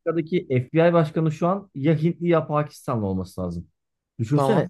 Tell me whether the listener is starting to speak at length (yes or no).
no